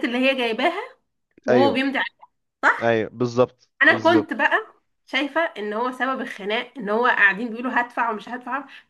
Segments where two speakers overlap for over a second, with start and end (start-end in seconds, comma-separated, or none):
none